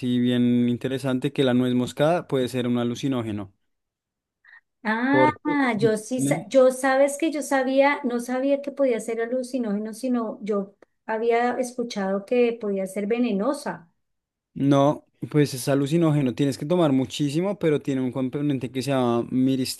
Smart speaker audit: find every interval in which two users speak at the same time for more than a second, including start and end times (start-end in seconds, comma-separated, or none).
5.1-6.5